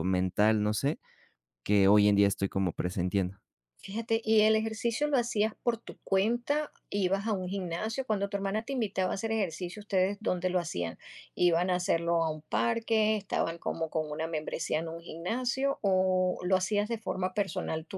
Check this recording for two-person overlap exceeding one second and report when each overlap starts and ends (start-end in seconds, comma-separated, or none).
none